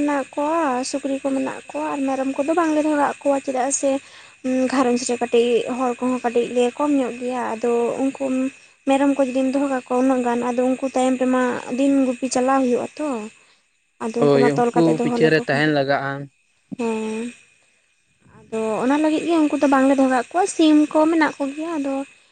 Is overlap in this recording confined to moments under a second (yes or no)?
no